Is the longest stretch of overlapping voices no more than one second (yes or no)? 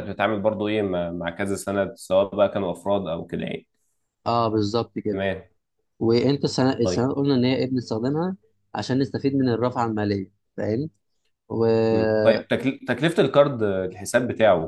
yes